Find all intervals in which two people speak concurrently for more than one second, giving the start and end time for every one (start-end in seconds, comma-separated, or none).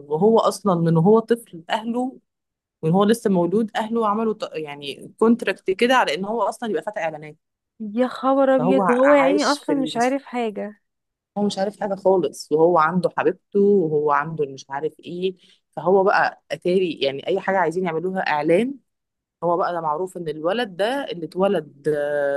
8.6-9.9